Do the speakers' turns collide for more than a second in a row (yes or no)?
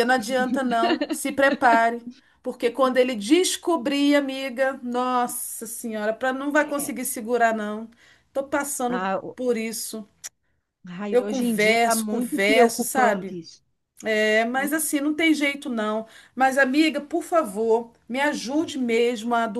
yes